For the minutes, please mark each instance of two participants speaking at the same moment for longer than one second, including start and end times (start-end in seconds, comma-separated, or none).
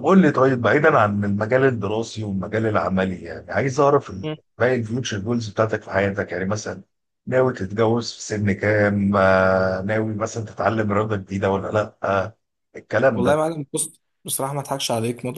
none